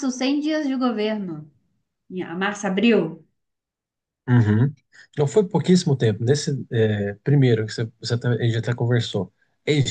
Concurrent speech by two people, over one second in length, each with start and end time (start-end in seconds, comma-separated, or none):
none